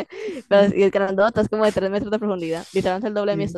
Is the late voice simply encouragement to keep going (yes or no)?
no